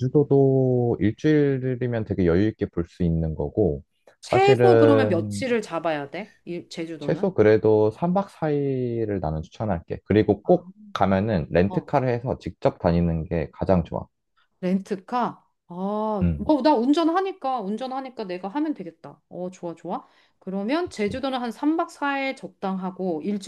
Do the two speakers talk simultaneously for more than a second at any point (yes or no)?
yes